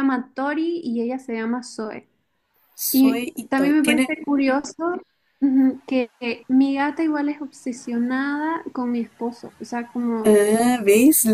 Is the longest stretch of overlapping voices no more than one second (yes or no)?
no